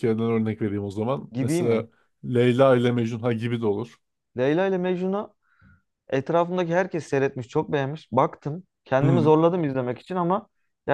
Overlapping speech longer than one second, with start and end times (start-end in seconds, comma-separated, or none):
none